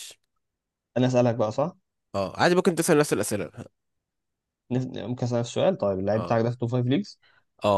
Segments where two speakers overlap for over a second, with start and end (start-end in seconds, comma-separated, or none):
none